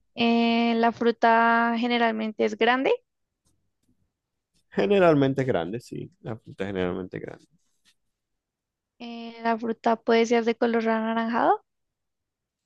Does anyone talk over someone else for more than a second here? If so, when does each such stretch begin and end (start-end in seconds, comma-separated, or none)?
none